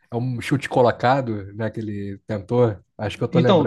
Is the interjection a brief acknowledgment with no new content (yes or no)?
no